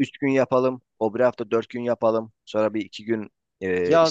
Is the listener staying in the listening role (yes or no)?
no